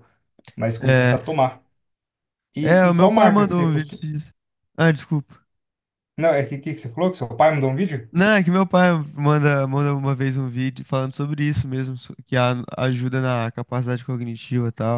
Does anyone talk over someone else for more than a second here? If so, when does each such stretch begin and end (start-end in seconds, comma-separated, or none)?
2.6-4.0